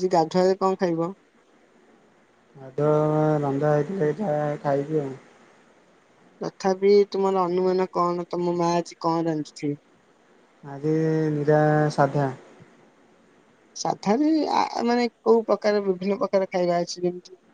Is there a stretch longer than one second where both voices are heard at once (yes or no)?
no